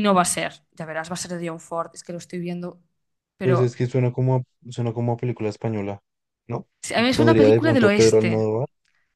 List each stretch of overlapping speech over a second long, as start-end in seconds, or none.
7.1-8.4